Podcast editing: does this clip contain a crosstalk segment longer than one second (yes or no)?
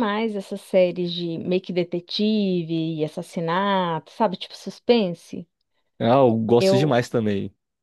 no